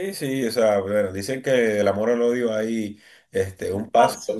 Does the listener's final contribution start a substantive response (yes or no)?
no